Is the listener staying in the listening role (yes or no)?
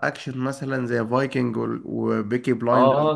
no